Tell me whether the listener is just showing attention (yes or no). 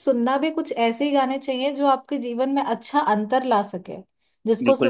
yes